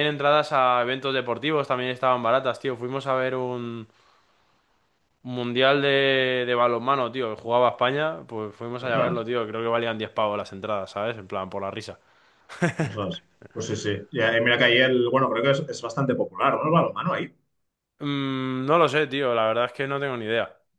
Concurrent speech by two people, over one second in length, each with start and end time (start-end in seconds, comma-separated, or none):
none